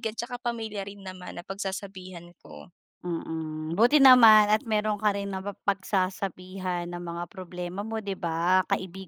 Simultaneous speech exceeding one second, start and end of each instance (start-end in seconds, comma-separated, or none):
none